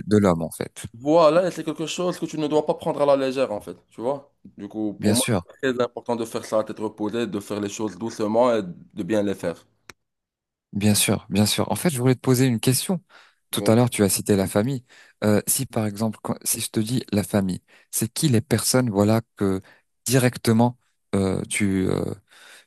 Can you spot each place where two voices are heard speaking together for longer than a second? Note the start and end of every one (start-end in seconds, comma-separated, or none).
none